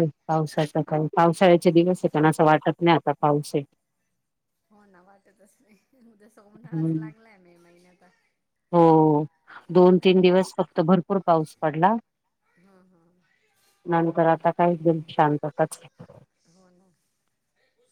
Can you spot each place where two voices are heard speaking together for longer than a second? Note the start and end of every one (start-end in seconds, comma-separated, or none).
none